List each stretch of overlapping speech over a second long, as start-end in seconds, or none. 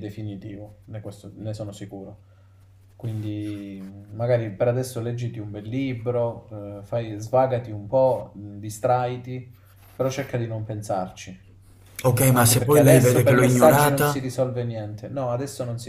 12.3-14.3